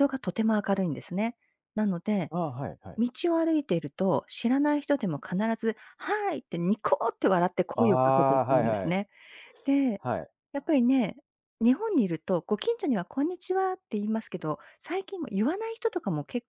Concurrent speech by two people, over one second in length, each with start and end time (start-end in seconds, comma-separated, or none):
7.8-9.0